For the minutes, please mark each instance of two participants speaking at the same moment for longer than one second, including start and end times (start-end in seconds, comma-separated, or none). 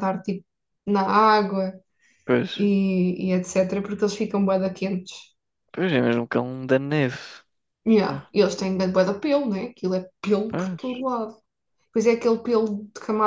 none